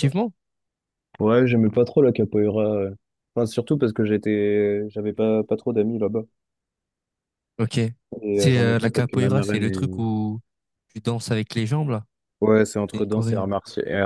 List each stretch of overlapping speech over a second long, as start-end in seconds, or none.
8.3-10.1